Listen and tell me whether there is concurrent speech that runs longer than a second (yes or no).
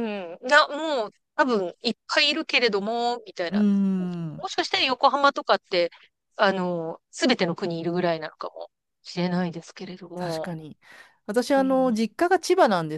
no